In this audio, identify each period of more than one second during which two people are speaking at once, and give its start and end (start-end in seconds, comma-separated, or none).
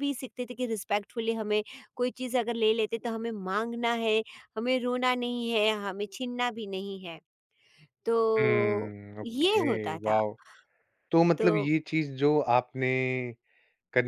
8.4-10.2